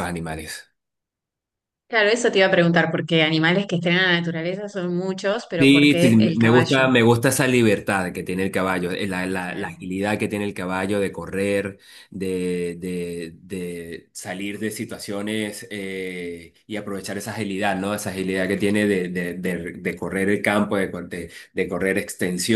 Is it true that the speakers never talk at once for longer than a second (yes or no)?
no